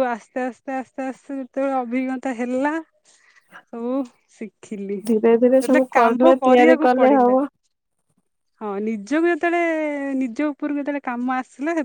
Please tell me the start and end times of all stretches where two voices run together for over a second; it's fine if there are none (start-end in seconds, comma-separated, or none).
5.6-7.3